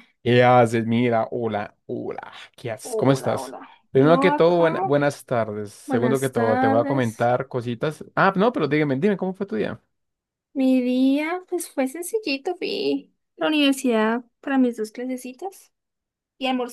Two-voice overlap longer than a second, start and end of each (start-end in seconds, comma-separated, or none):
2.8-4.7, 5.8-7.3